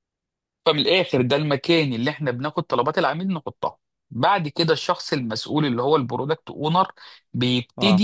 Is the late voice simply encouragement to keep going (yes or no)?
yes